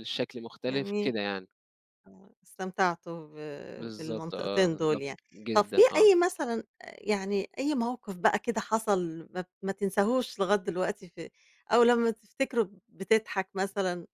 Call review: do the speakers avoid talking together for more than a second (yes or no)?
no